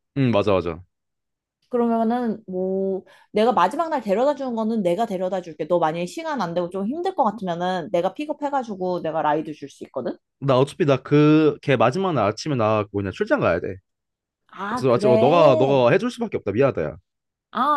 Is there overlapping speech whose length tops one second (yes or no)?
yes